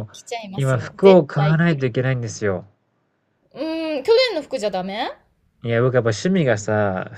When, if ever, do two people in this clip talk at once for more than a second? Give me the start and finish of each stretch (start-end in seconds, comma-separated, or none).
0.5-1.9